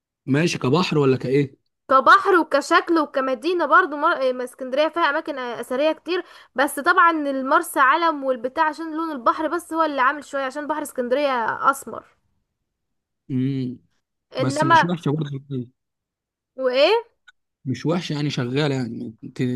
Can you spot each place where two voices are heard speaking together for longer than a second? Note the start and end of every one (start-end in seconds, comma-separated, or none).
none